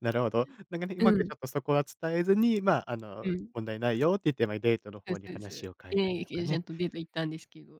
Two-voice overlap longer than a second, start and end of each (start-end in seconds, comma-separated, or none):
5.1-6.6